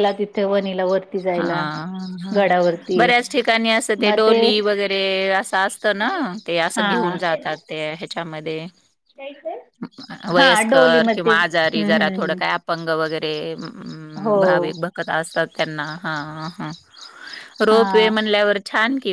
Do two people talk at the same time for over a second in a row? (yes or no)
yes